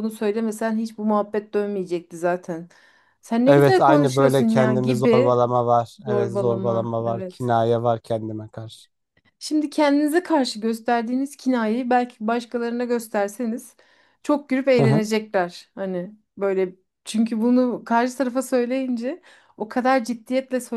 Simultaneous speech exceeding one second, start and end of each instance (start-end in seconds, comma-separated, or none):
3.5-5.4, 6.0-7.5